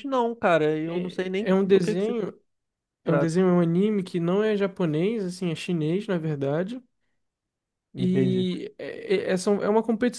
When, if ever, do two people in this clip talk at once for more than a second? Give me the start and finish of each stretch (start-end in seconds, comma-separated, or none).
0.8-2.1